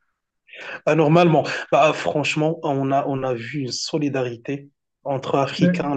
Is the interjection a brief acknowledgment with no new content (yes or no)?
yes